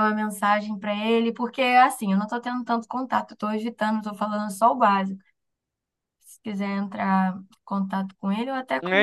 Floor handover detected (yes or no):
yes